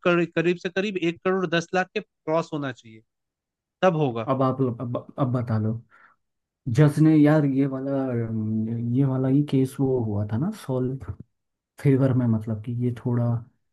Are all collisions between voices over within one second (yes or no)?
yes